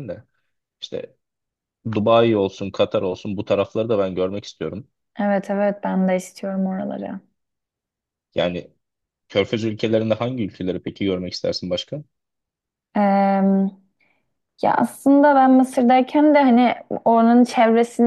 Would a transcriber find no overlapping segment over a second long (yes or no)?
yes